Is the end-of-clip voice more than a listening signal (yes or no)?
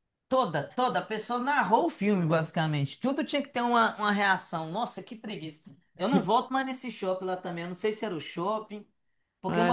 no